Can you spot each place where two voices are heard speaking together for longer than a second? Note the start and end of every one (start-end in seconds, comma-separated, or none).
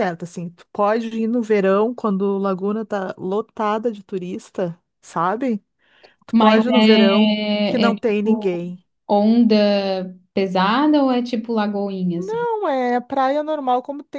6.3-8.6